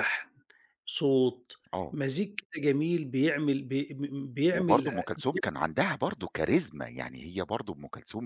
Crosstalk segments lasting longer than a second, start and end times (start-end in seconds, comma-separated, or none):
none